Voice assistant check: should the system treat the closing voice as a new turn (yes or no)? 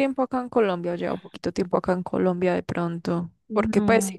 no